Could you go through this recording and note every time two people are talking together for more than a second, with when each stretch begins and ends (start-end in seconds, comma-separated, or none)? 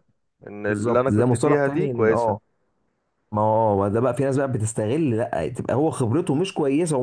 0.6-2.4